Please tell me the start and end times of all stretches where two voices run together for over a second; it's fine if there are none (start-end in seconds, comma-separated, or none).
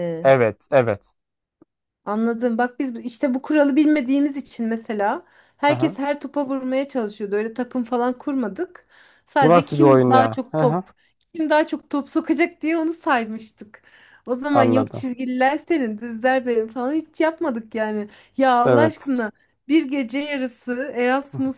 9.4-10.8